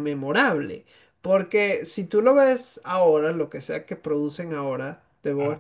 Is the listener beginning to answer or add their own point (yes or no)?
no